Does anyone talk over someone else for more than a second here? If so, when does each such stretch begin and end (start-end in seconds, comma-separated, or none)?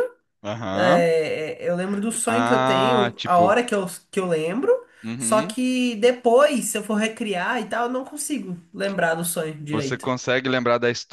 2.2-3.6